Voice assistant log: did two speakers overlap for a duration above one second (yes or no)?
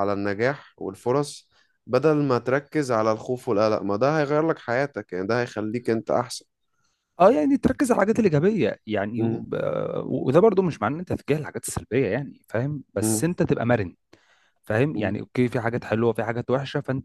no